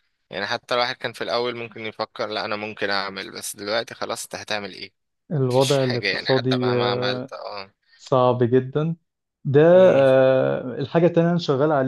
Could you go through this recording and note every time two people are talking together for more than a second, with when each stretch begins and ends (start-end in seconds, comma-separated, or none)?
5.5-7.3